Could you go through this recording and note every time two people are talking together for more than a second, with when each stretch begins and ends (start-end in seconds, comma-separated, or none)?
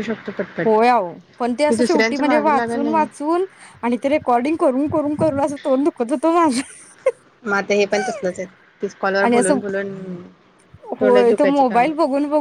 1.7-3.1